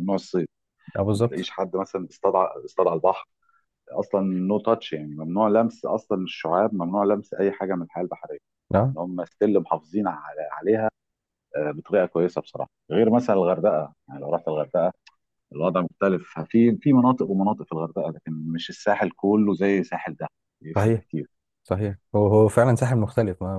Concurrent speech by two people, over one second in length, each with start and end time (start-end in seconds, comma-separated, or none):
none